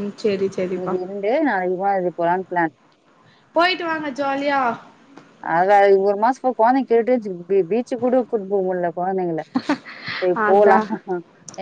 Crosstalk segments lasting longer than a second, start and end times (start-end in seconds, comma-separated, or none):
none